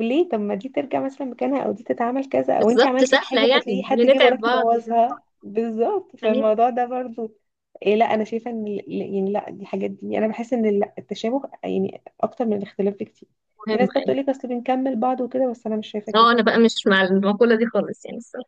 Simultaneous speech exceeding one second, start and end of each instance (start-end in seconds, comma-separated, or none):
2.6-4.7